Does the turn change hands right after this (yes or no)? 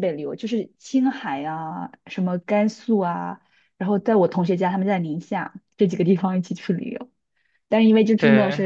no